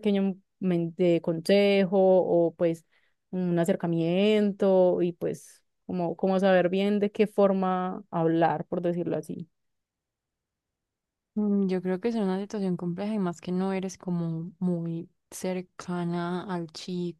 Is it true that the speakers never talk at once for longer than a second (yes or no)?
yes